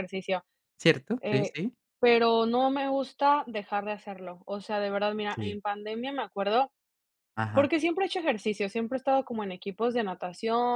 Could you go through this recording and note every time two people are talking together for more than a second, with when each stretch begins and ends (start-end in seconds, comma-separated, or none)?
none